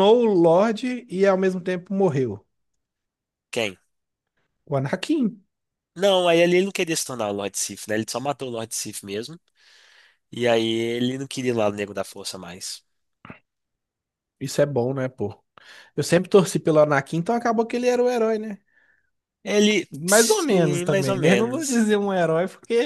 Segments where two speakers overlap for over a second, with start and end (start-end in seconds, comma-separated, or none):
19.9-21.9